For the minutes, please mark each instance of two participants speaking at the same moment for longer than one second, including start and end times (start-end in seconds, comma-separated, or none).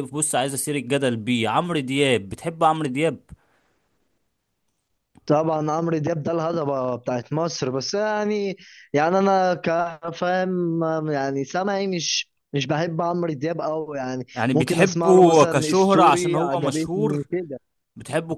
14.3-17.3